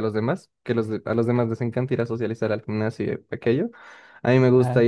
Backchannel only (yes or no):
yes